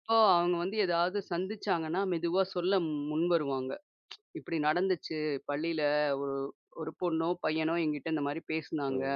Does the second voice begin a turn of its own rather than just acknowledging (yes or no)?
yes